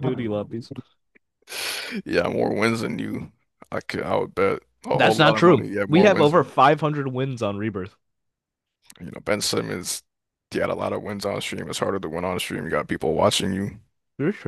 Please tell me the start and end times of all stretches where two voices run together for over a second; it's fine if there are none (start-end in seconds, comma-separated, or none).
4.9-6.5